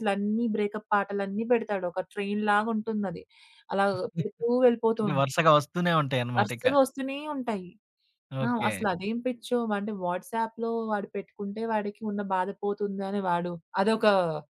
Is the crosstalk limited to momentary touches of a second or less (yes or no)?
yes